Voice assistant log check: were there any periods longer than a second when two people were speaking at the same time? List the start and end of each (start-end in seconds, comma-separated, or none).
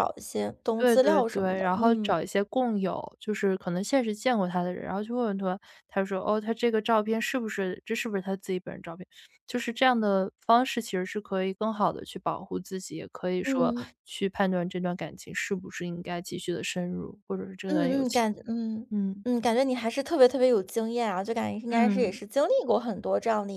0.8-2.2